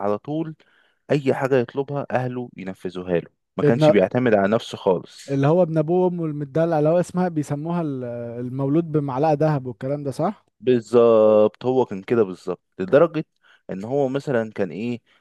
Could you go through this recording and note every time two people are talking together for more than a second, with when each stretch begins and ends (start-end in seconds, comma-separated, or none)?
none